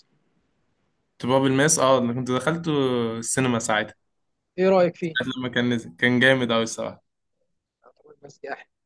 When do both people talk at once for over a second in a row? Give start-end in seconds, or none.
none